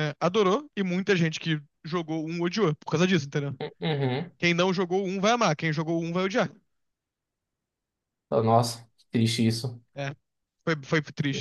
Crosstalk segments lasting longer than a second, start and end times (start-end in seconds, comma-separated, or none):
none